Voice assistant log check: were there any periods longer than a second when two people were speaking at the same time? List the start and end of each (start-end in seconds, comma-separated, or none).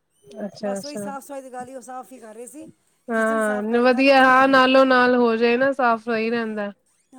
3.1-4.5